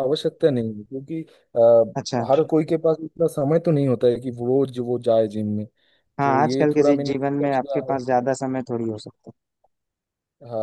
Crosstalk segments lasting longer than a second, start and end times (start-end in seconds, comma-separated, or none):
6.2-8.0